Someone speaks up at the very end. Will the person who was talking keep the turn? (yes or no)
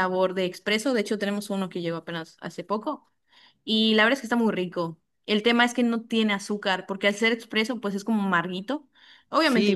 no